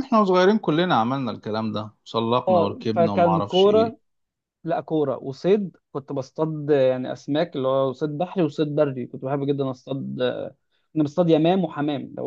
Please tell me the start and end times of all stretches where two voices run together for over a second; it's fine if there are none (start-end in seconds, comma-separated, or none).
2.5-4.0